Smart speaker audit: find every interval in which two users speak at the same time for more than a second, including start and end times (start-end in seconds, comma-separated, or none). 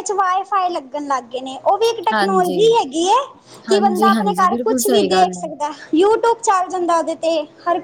3.7-5.5